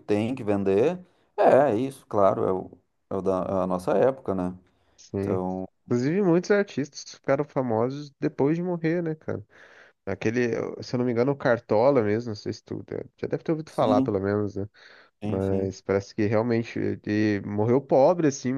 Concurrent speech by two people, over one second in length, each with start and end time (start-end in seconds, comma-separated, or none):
none